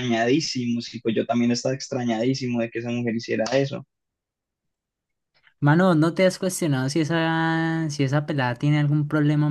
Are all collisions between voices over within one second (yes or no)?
yes